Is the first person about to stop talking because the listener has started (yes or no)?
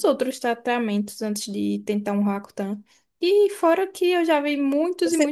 no